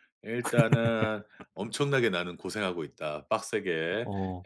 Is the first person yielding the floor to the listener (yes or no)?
no